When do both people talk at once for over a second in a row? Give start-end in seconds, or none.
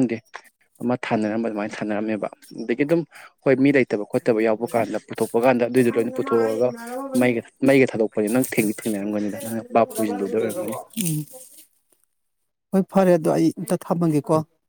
none